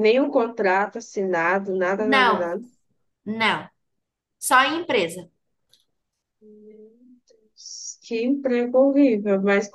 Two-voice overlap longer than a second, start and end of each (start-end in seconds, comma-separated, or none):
none